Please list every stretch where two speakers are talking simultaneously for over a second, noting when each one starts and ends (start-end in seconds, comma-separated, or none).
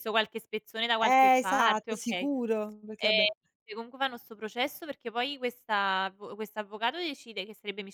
1.0-2.3